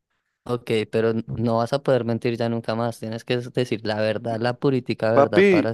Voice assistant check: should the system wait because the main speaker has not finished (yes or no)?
no